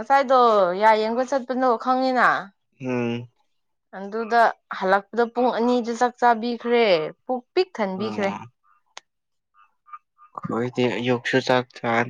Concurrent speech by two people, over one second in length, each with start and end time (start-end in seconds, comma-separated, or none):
none